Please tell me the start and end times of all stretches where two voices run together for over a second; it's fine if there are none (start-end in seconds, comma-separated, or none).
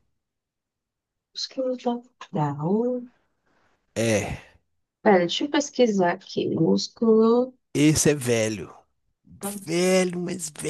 none